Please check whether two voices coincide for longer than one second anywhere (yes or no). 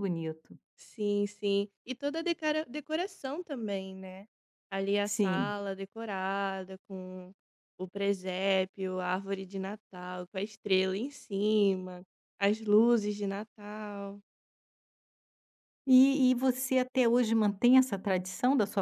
no